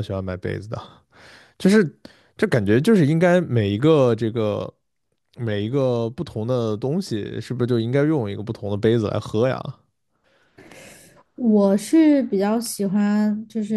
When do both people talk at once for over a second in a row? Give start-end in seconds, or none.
none